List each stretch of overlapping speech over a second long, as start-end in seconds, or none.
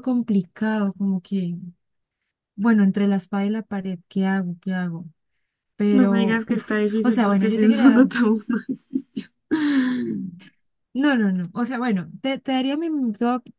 5.9-8.1